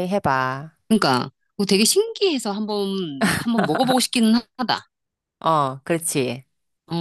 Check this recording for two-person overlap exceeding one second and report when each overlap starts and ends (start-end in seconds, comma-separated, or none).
none